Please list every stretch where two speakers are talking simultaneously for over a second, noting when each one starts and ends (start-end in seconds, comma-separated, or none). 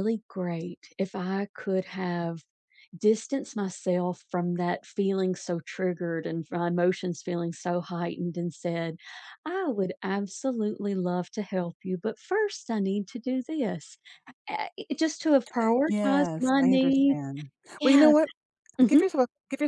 15.9-17.2